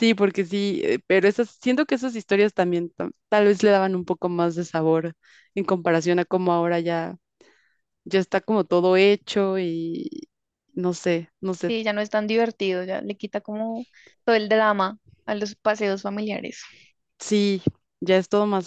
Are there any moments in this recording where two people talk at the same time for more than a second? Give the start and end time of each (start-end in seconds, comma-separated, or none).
none